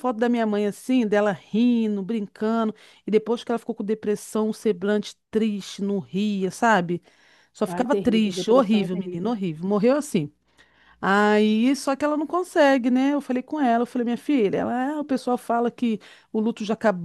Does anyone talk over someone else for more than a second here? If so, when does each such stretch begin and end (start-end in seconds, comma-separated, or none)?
7.7-9.3